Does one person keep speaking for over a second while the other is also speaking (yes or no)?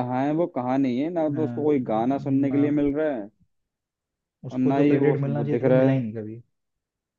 yes